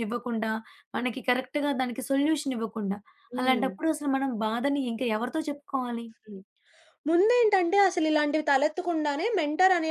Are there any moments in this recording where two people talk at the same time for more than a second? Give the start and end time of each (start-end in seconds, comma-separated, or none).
none